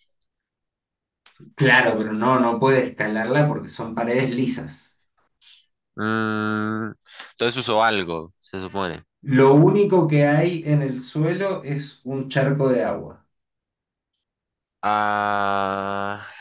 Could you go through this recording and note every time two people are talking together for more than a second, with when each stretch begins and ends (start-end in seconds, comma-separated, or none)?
none